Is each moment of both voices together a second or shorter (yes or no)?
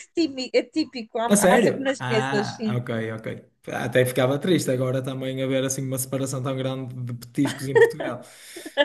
no